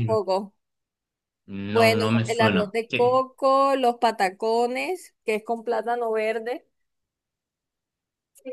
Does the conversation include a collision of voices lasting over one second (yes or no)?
yes